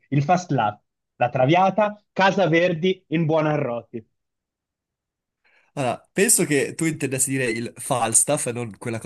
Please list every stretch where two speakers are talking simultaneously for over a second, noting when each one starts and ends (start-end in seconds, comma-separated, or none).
none